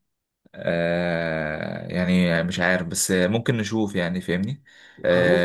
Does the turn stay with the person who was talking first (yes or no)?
yes